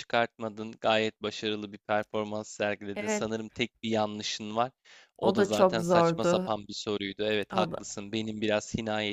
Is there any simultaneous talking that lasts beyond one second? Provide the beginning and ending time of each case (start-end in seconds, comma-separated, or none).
5.2-6.5